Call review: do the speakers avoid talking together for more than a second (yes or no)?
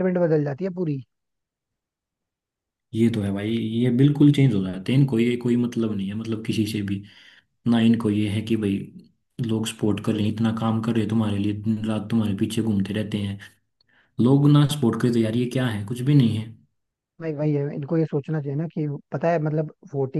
yes